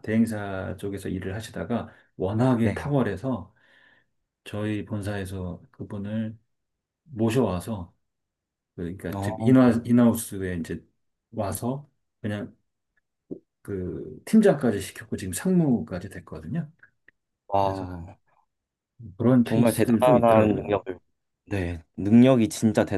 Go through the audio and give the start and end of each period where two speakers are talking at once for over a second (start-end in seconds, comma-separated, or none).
19.4-20.8